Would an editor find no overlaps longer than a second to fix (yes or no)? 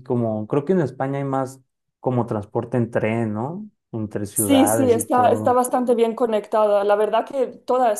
no